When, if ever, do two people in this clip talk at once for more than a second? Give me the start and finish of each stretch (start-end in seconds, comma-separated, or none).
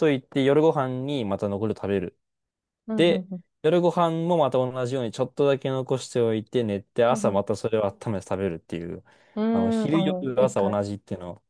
9.5-10.8